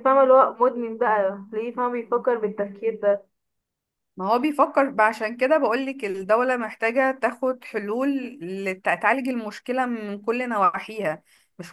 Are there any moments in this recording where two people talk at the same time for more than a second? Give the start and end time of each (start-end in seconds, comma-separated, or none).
none